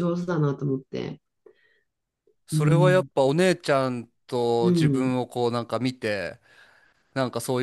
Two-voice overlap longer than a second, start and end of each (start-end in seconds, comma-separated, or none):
none